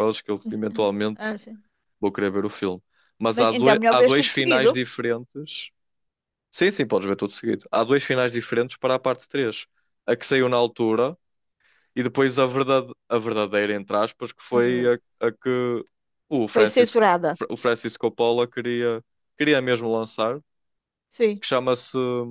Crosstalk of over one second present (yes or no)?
yes